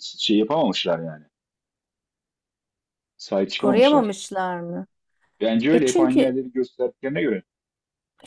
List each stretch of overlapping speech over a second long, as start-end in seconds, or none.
none